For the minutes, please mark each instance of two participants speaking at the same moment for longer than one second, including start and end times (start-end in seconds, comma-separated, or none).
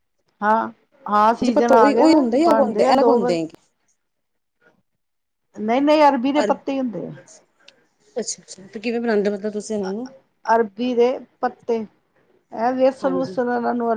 1.3-3.4